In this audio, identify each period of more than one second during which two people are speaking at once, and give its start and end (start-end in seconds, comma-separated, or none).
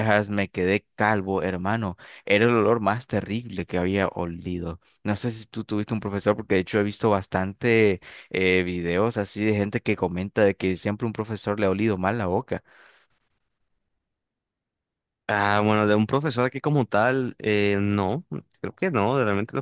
none